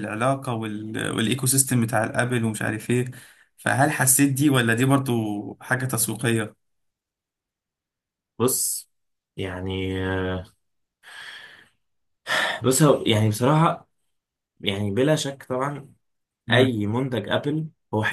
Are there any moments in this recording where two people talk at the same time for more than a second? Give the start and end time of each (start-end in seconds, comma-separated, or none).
none